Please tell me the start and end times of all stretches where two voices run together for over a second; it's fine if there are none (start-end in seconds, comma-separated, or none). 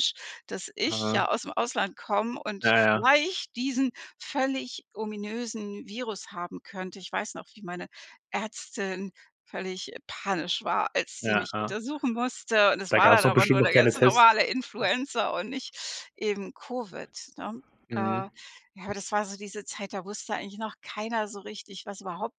12.9-14.2